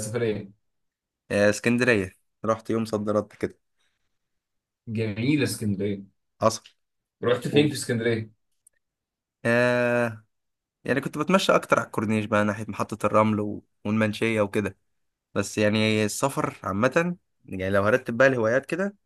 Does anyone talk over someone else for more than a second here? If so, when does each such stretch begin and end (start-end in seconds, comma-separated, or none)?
none